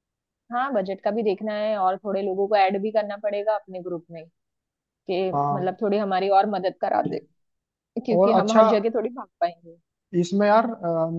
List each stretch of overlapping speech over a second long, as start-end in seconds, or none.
none